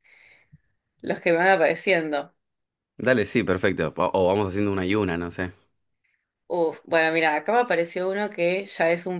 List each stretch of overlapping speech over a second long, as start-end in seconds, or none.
none